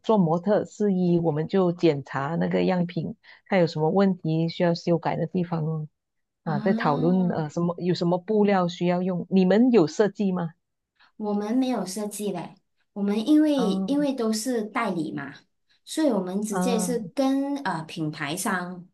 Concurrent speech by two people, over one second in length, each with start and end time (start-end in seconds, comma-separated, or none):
none